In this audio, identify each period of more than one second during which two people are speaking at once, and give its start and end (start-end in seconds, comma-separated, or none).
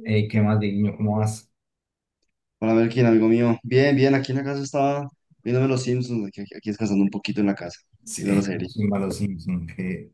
none